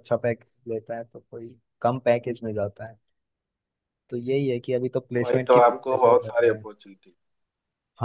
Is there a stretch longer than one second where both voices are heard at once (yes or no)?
yes